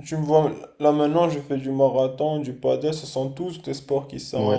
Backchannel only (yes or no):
no